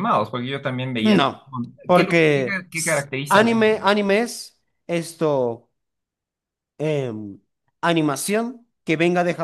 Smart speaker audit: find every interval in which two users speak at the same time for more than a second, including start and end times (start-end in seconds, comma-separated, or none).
1.9-3.9